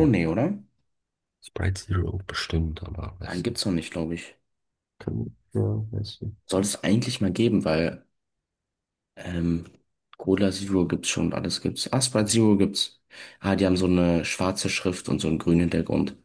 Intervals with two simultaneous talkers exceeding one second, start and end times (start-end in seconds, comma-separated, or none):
none